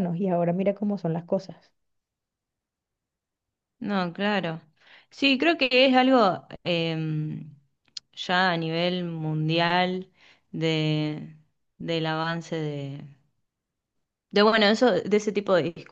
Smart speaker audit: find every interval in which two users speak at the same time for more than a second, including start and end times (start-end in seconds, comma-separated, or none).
none